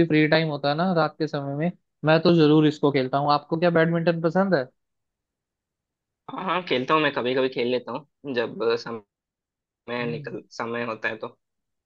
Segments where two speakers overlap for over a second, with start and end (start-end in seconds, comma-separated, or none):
none